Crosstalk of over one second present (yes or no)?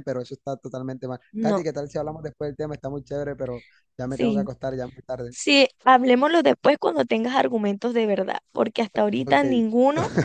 no